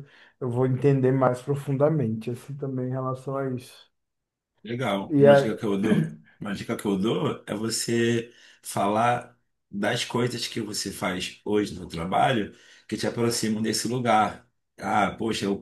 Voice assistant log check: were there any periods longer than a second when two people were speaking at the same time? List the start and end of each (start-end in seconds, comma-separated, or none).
none